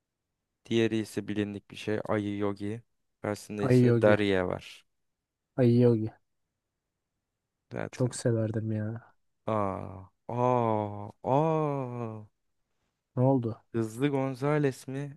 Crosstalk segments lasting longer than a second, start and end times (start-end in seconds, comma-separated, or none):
none